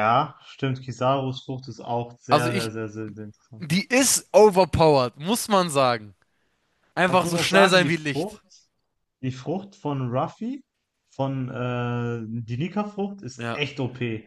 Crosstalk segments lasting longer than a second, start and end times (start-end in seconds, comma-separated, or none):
7.0-8.4